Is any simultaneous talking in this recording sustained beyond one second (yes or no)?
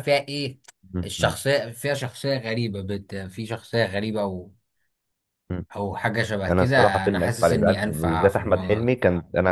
yes